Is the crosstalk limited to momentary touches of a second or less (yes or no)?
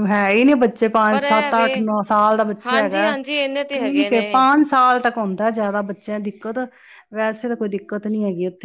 yes